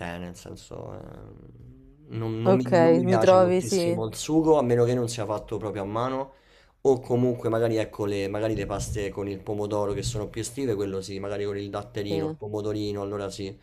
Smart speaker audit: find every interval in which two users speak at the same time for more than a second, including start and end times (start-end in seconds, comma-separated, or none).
2.4-4.0